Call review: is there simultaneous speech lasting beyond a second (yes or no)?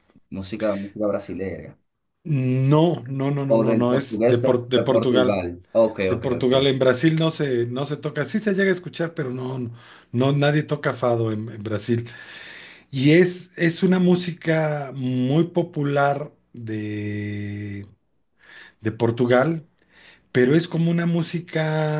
yes